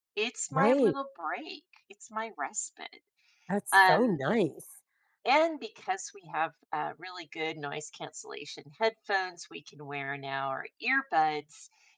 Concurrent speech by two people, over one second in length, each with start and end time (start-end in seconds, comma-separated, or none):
none